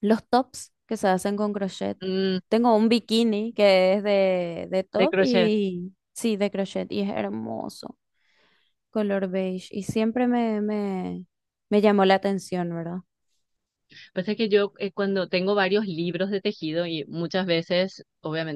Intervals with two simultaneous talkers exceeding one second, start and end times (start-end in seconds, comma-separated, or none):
none